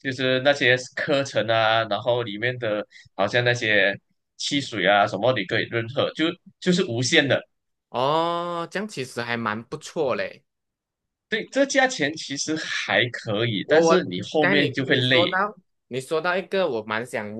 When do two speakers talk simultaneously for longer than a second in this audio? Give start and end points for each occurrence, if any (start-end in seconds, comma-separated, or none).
13.6-15.4